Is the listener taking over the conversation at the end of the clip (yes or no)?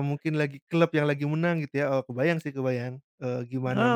yes